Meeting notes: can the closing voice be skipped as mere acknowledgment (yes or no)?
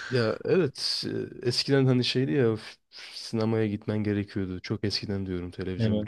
yes